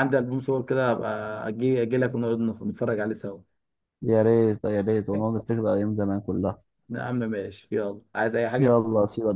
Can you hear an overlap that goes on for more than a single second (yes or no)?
no